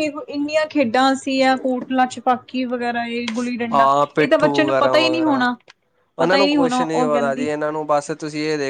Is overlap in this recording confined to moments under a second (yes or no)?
no